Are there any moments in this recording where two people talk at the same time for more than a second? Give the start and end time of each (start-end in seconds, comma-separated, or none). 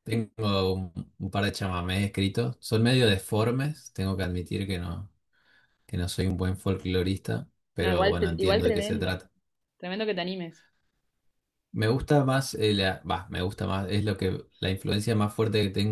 7.8-9.2